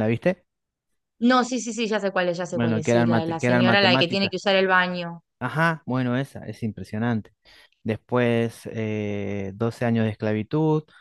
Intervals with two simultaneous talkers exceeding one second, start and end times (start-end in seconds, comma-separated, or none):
2.5-4.3